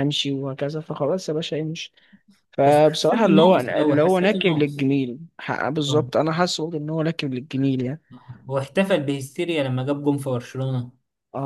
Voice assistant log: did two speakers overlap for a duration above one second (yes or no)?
yes